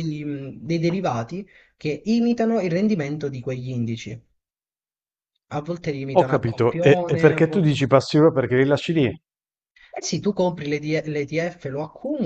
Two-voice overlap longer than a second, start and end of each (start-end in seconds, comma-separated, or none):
6.2-7.8